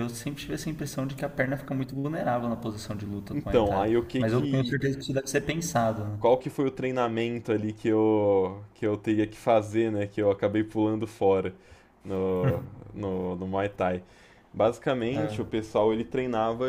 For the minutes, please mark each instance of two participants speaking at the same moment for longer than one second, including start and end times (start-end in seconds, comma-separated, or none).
3.3-4.7